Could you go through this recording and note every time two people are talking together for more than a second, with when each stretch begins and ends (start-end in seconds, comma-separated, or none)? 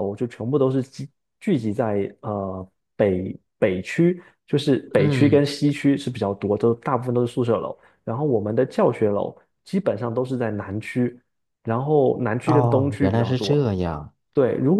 12.4-13.7